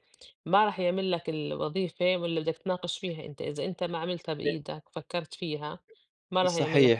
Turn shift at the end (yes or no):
yes